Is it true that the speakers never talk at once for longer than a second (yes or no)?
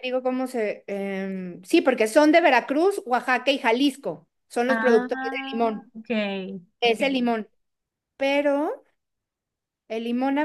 no